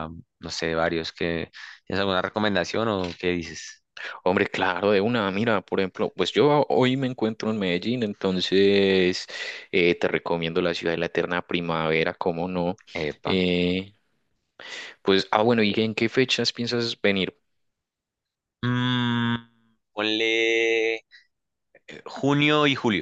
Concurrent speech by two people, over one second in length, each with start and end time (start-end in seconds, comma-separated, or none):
none